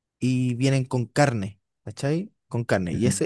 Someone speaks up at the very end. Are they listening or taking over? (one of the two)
listening